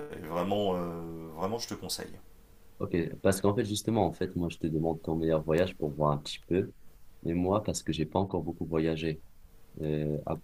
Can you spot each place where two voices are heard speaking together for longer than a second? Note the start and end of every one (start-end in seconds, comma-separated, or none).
none